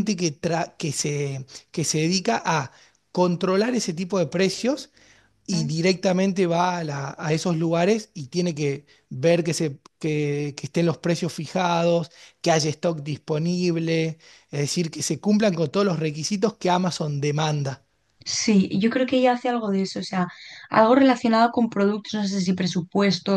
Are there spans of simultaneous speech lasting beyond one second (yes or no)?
no